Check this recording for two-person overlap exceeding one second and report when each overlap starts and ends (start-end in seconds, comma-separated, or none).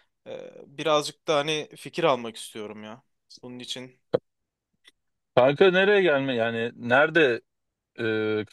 none